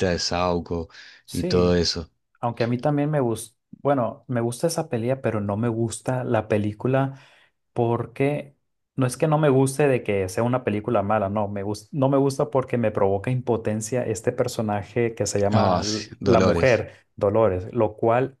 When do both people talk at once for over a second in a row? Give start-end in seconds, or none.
15.5-16.8